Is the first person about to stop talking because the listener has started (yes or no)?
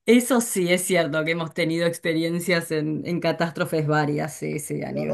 yes